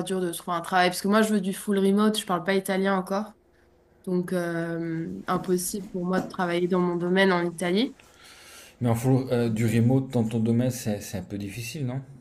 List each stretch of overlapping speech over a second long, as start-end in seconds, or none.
none